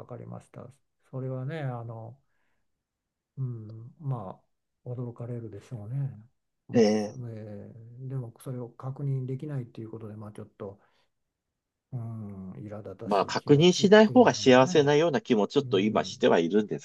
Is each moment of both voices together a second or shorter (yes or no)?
no